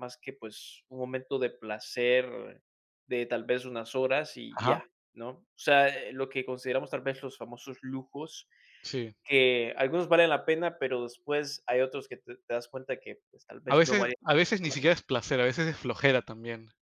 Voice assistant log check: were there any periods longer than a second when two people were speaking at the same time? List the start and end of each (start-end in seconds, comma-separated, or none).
none